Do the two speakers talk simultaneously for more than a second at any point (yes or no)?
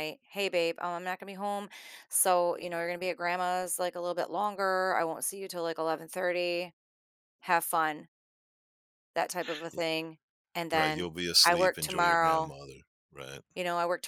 yes